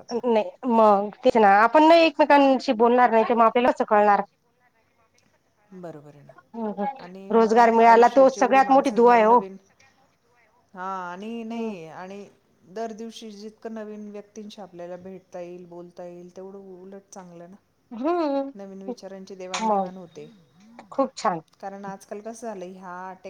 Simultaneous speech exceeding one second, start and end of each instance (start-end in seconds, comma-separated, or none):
7.3-9.4